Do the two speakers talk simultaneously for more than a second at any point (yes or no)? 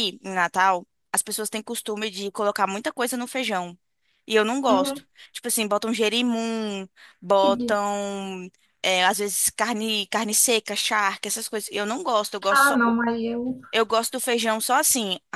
no